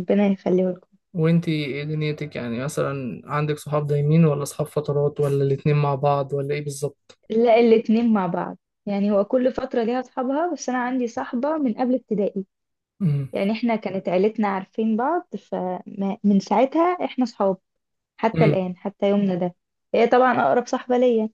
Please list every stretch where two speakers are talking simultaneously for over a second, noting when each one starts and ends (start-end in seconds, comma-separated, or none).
none